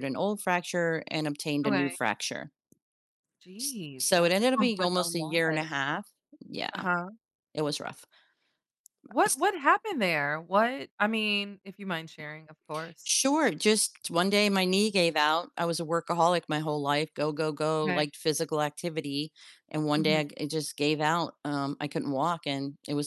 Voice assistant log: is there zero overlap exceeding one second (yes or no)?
no